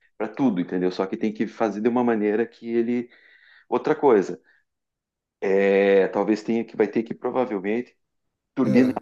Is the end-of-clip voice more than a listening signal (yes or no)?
no